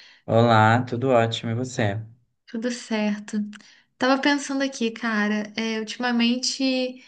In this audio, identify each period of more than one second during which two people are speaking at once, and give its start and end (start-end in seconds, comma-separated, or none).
none